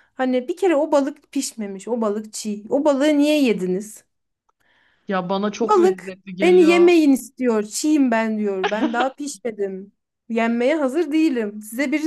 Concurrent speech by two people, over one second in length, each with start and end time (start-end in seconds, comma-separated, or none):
5.6-6.9